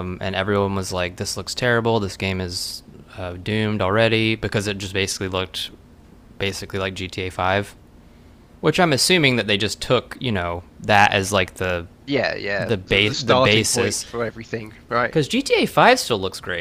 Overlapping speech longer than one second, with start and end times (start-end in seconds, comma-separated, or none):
12.6-14.1